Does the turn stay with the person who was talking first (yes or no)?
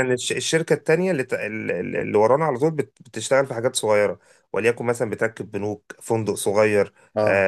yes